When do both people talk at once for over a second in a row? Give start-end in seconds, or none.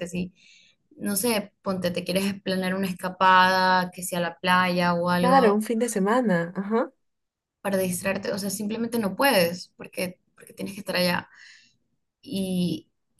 none